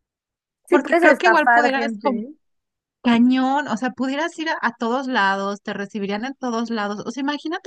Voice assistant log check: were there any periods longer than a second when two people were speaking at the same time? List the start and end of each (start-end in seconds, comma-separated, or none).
0.7-2.2